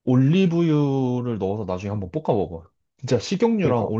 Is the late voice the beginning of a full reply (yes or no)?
no